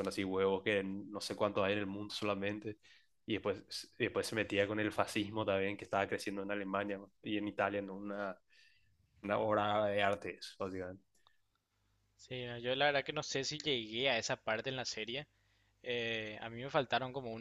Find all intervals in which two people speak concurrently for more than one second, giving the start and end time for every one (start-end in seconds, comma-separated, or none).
none